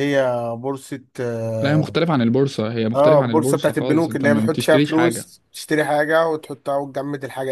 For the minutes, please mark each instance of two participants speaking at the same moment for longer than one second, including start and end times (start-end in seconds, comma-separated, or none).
3.0-5.2